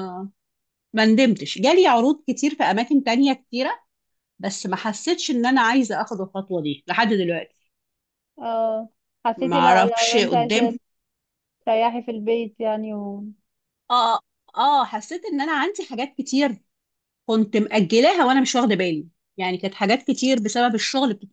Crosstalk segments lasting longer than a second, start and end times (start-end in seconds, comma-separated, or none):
9.4-10.7